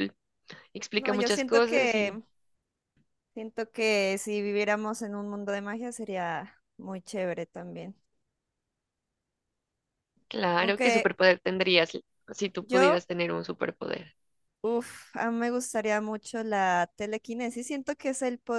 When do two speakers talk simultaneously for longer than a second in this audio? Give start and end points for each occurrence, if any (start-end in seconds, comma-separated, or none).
0.9-2.2